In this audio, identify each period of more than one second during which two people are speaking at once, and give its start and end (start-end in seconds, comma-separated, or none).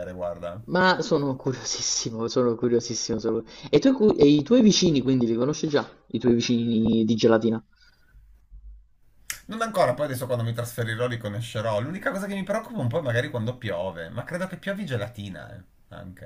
none